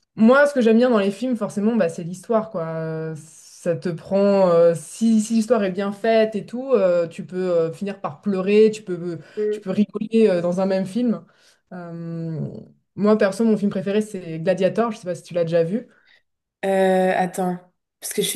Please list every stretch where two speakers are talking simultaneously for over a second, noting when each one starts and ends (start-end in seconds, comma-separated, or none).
none